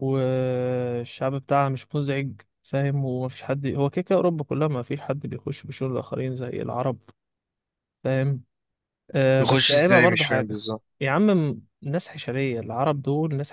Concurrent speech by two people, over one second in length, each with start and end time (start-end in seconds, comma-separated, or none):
9.3-10.6